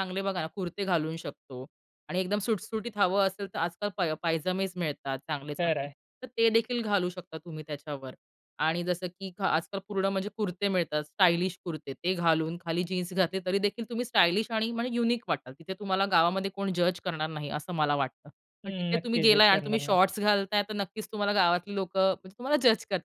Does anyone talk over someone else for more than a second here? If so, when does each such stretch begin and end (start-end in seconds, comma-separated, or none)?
18.6-20.0